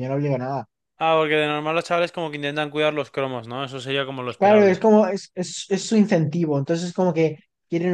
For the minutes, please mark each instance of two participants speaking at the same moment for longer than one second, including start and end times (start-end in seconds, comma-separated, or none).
none